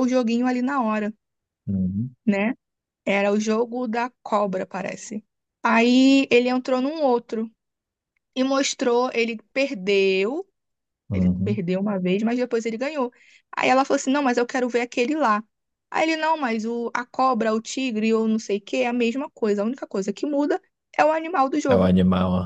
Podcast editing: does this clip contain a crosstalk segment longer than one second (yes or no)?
no